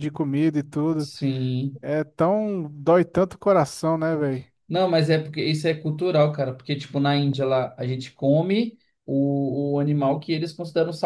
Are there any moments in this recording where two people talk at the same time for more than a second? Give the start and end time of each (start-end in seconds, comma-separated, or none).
none